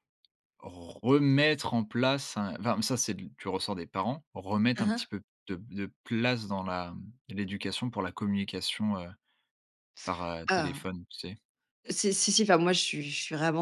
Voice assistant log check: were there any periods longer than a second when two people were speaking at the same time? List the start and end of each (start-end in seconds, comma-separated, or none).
none